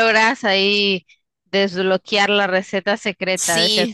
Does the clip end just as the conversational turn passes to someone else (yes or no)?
yes